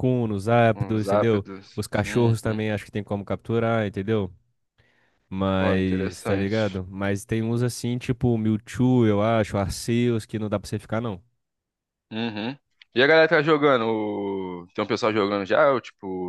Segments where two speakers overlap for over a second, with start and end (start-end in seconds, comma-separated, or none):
0.7-2.6, 5.6-6.8